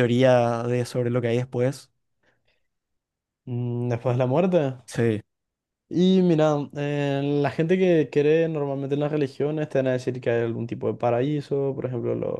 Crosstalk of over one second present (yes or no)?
no